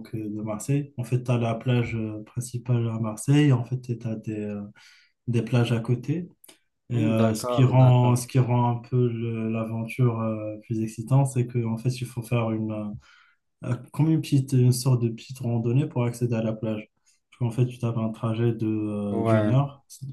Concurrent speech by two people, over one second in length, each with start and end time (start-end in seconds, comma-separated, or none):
6.9-8.2